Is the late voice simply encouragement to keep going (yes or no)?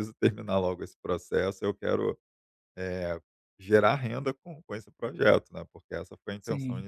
yes